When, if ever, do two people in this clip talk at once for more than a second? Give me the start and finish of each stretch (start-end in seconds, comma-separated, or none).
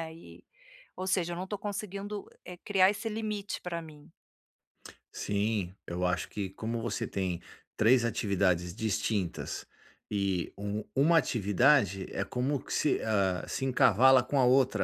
none